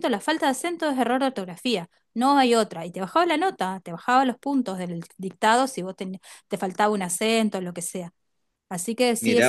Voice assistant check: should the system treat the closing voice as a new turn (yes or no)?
no